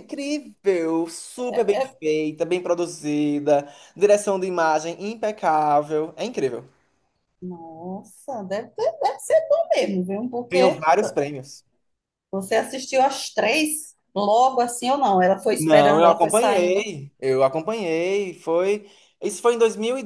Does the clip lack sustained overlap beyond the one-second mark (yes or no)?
no